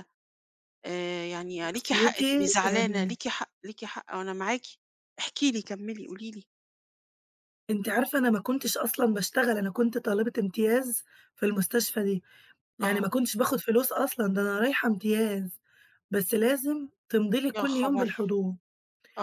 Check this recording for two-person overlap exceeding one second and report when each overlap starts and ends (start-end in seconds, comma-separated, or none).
1.6-3.1